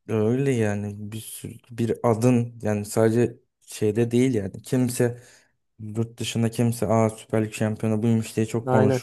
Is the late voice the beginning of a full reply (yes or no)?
no